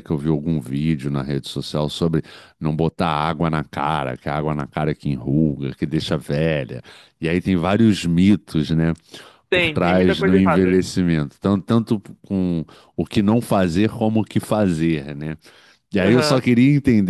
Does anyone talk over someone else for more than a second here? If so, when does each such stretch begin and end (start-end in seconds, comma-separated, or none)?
9.5-10.8